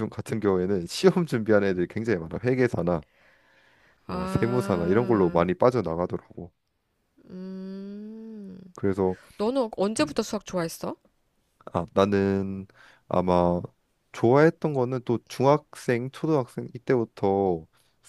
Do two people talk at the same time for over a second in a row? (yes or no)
yes